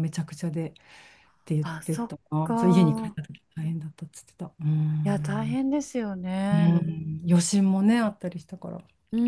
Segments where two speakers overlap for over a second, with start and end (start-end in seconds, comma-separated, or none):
1.6-3.2